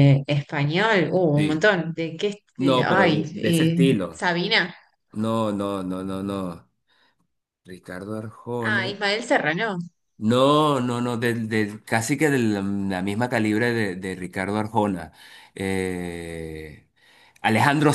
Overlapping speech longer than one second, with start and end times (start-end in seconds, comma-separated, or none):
2.6-4.3